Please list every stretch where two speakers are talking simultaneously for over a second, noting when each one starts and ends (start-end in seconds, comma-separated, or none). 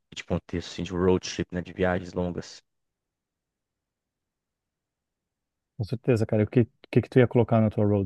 none